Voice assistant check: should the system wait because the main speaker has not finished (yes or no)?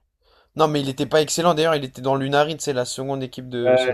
no